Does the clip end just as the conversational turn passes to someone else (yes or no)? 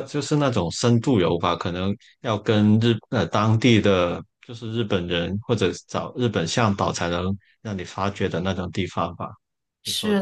yes